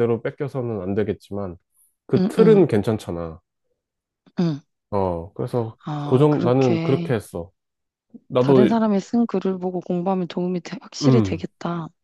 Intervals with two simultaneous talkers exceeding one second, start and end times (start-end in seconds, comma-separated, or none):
5.8-7.1